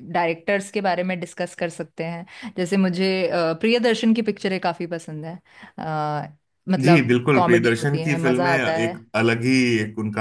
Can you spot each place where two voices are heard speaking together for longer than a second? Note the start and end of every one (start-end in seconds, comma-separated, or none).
6.8-9.0